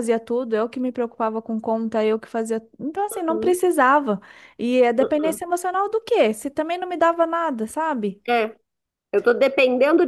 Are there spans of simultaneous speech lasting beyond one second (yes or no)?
no